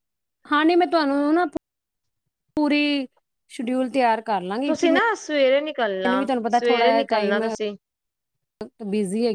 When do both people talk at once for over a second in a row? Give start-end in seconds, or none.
5.9-7.4